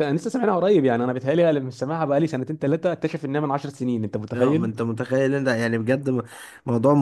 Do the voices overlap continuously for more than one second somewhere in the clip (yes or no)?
no